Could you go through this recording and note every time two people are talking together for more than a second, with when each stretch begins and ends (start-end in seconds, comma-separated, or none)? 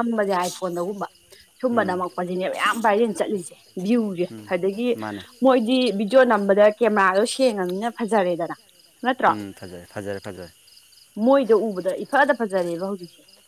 none